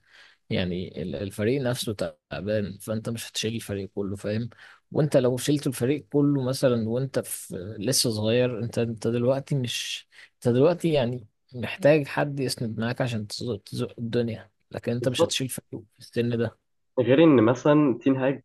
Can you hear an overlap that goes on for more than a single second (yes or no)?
no